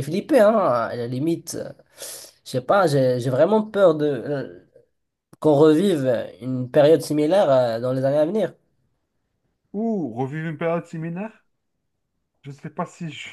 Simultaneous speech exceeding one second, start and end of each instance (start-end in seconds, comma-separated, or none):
none